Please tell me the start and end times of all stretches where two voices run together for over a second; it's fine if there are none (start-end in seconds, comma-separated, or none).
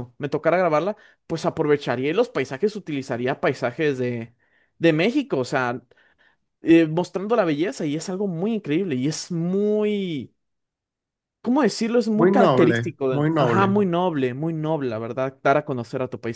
12.2-13.8